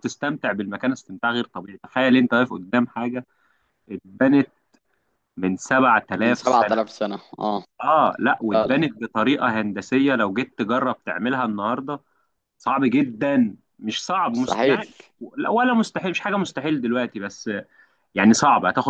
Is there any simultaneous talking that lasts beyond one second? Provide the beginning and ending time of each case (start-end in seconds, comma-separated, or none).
none